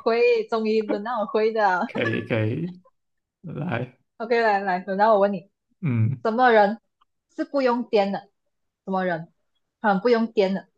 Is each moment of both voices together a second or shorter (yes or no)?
yes